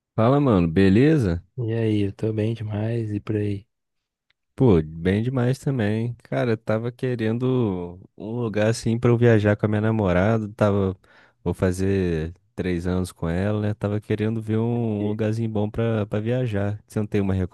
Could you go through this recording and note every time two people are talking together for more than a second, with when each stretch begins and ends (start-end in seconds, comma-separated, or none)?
none